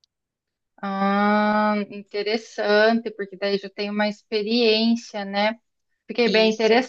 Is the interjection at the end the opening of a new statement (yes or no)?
no